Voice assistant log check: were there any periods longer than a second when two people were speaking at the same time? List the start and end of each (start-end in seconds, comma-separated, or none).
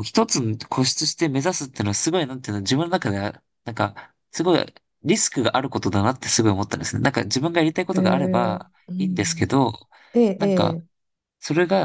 7.9-9.4